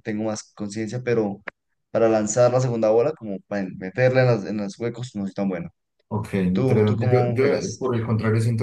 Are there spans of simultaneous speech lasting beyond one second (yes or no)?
yes